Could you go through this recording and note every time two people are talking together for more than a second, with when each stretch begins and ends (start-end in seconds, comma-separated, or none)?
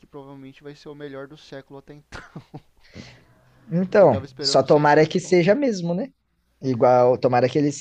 4.0-5.5